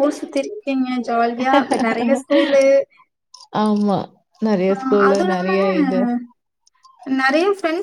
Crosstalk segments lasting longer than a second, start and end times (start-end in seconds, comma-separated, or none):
none